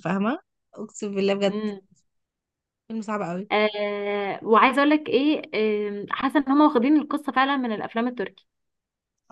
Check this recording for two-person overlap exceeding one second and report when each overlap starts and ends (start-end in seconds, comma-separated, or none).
none